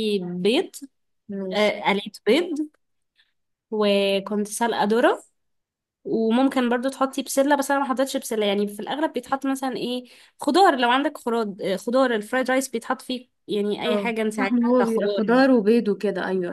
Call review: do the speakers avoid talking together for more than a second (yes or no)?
no